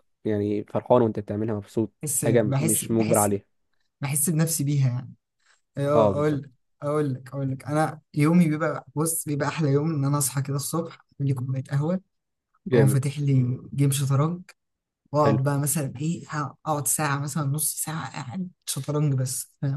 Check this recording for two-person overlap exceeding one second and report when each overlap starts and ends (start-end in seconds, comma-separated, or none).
2.0-3.3